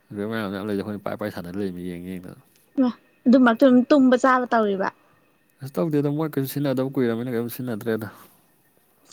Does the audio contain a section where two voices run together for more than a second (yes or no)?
no